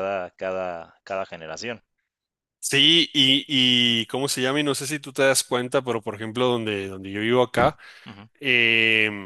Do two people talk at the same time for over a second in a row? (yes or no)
no